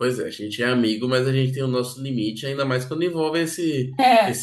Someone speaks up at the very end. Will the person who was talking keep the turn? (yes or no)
yes